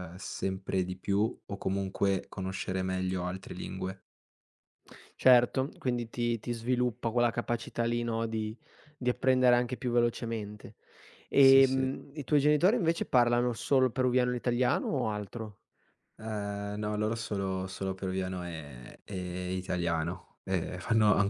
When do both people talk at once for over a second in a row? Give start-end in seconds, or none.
none